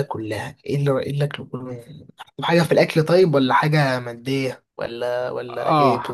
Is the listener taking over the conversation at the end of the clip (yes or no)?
yes